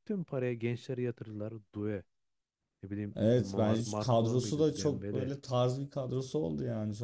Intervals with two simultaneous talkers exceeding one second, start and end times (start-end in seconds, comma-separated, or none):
3.1-5.3